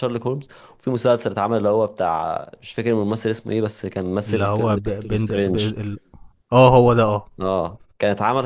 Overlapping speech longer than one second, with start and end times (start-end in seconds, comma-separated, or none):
4.3-5.7